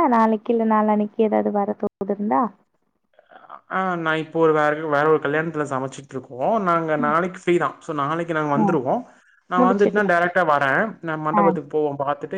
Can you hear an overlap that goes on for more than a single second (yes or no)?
no